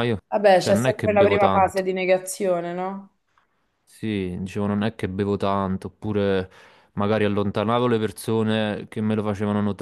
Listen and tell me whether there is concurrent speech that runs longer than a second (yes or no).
yes